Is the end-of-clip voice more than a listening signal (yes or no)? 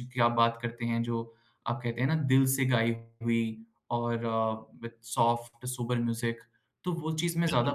yes